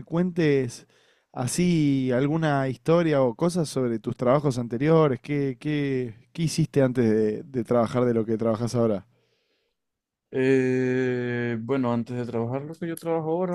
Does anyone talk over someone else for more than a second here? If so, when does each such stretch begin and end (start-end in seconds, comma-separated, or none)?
none